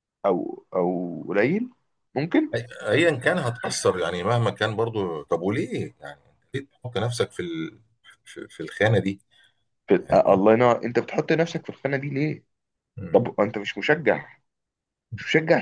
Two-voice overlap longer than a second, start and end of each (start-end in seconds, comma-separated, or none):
none